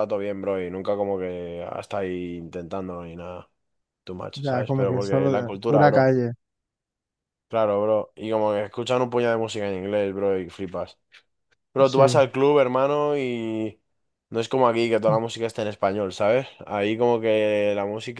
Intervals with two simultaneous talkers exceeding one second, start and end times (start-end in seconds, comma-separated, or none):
4.3-6.1